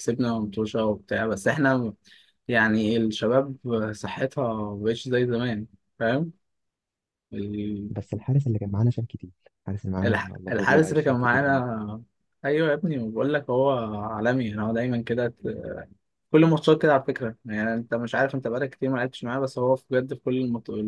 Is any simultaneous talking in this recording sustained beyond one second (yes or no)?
yes